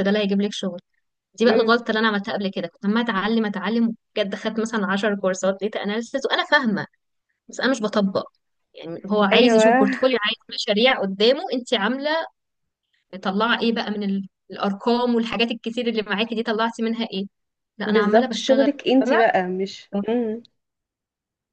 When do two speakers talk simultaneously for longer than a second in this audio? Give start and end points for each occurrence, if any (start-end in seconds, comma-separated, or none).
17.8-19.2